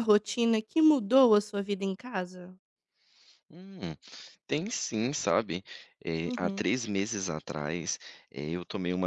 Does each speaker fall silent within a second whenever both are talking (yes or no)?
yes